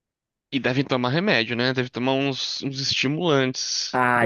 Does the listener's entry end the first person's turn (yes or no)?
yes